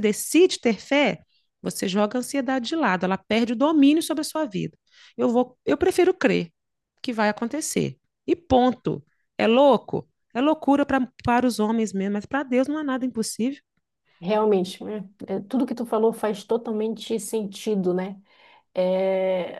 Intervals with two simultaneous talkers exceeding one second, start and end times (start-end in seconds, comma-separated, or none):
none